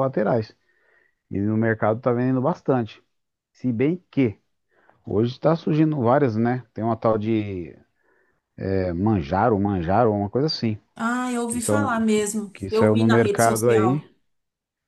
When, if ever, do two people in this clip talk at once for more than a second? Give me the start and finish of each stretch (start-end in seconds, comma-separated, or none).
11.5-14.0